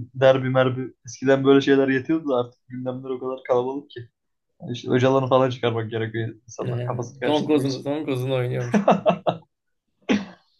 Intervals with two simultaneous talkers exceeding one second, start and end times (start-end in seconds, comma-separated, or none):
6.6-7.8